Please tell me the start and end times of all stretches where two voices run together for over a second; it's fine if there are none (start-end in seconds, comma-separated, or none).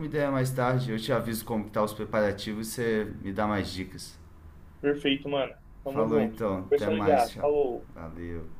5.9-7.5